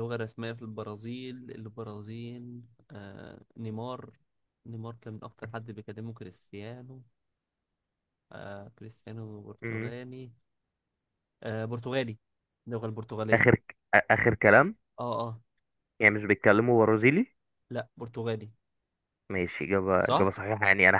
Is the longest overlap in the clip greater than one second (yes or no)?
no